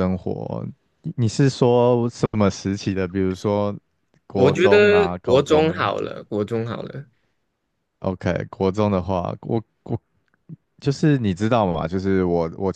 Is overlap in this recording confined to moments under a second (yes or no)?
no